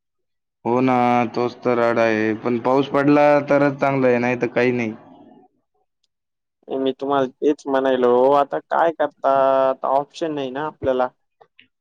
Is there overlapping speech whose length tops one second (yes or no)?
no